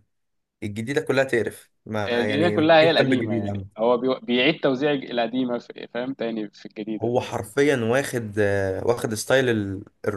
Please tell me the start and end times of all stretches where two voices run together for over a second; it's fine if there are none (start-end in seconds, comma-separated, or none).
2.1-3.6